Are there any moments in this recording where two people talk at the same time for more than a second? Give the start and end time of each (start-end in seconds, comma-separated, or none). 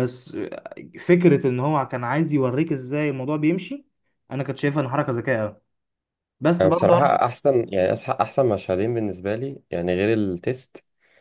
none